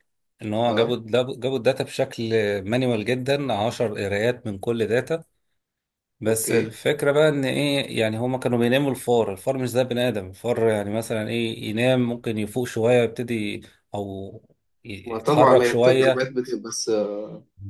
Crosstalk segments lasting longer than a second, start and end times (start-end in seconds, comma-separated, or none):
15.1-16.3